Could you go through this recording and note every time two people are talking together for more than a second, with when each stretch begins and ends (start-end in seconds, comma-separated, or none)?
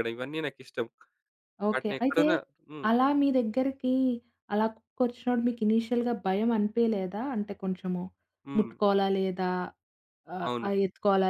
none